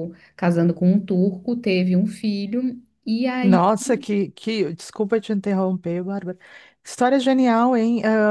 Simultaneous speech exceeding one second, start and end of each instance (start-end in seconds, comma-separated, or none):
none